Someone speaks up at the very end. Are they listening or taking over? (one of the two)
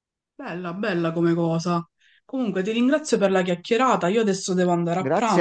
taking over